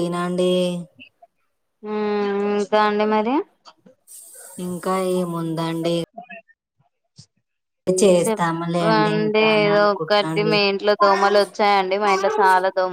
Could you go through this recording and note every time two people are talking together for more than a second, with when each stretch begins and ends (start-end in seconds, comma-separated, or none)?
8.2-10.5